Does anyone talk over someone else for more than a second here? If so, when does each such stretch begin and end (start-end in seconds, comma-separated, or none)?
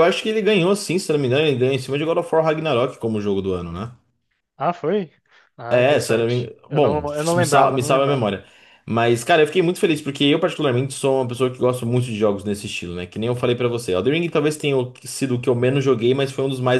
5.7-8.3